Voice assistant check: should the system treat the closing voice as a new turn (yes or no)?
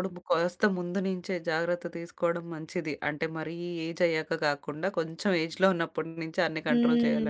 yes